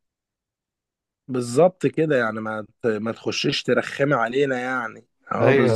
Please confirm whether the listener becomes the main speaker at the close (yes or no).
yes